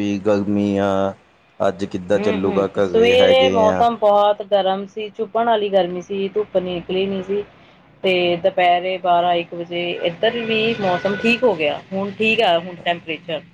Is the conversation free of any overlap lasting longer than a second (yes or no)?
no